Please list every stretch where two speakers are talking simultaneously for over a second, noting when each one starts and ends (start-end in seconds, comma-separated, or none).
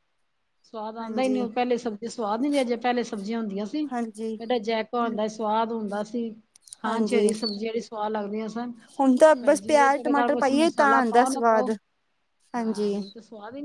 9.4-11.7